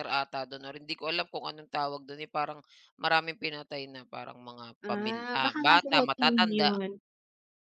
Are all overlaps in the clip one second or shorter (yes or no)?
no